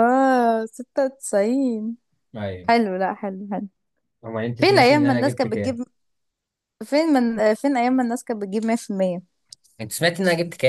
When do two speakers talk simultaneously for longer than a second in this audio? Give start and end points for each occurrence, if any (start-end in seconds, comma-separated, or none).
4.6-5.8